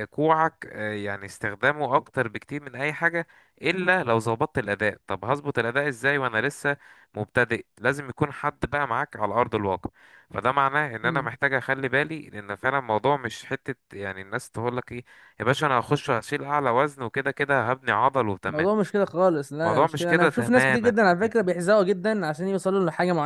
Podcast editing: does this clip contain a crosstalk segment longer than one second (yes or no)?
yes